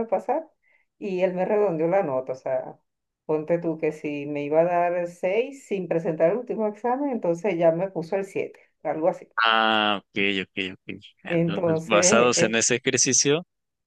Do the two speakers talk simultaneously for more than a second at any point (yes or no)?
yes